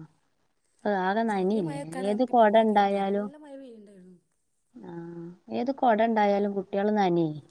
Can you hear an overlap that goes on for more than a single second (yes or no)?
yes